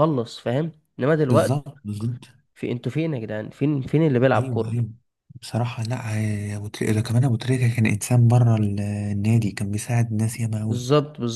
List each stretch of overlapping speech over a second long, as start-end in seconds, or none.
none